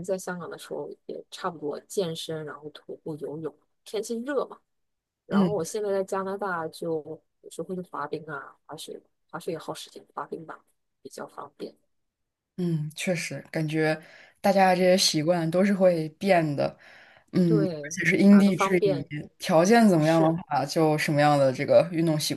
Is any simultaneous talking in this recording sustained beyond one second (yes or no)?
yes